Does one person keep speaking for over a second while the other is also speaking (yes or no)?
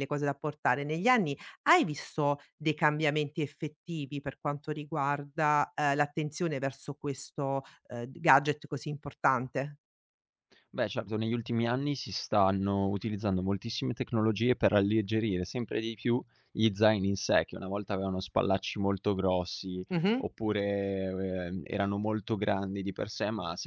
no